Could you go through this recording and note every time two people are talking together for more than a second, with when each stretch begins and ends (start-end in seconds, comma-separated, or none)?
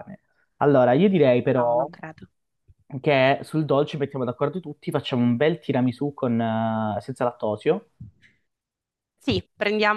none